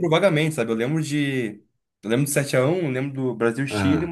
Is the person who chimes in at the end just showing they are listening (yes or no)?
yes